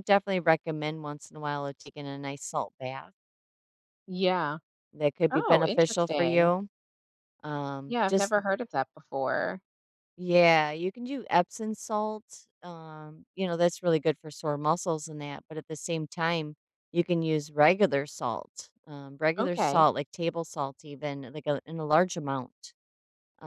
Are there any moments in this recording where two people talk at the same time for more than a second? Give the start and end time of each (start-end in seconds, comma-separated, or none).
5.3-6.5